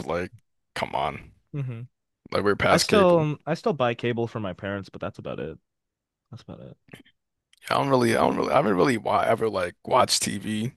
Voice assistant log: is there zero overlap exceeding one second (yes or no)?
yes